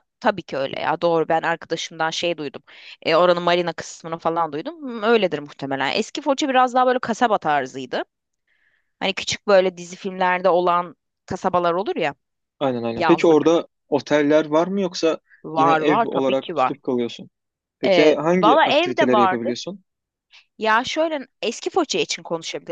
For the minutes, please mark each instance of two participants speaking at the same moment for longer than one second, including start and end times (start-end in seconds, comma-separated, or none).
15.6-16.8, 17.9-19.7